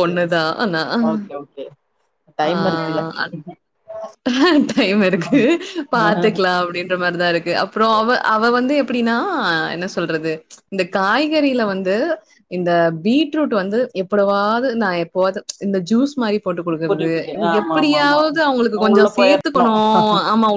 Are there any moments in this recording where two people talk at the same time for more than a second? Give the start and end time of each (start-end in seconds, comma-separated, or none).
16.9-19.4